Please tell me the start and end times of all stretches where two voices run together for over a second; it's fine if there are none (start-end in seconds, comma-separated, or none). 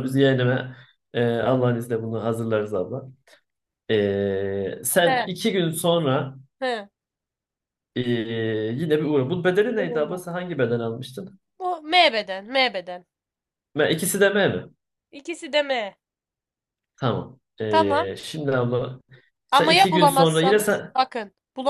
19.5-20.9